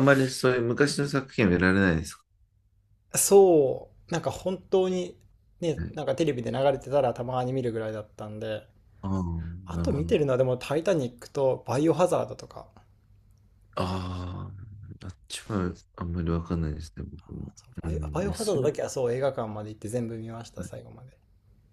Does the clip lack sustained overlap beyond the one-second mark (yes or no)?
no